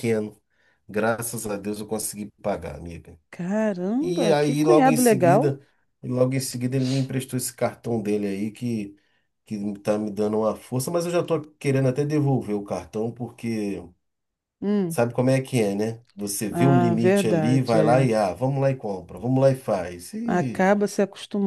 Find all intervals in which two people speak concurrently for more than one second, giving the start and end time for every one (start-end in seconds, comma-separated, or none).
4.0-5.6, 16.5-18.0